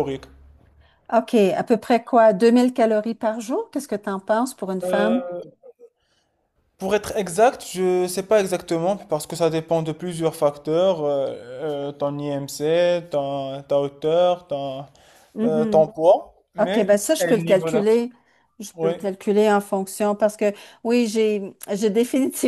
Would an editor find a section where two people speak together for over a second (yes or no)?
yes